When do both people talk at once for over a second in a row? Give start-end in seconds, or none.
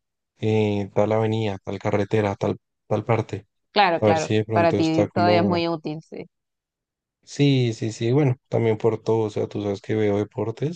4.0-5.6